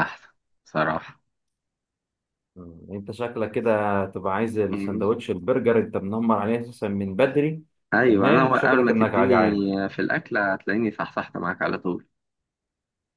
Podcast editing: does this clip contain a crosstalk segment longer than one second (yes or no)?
yes